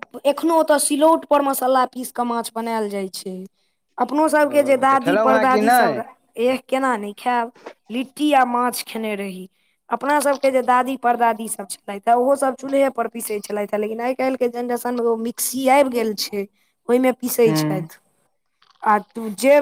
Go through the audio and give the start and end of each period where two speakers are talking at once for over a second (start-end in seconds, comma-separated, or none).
4.5-6.0